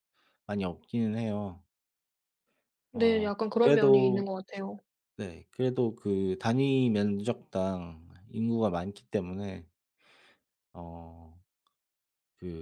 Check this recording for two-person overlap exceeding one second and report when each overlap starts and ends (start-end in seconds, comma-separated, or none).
2.9-4.2